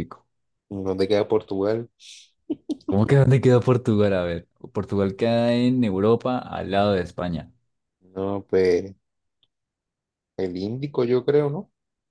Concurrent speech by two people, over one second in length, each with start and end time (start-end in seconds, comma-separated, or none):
none